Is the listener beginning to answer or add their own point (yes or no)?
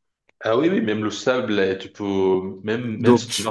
no